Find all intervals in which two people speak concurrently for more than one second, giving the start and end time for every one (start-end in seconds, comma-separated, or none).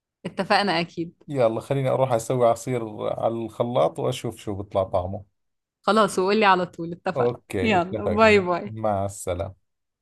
7.2-8.8